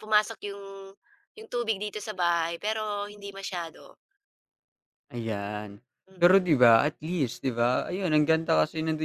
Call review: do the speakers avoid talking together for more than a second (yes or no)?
yes